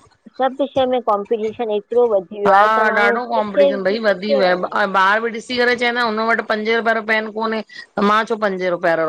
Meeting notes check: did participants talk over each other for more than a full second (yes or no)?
no